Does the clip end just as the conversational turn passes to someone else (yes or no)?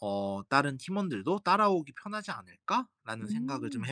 yes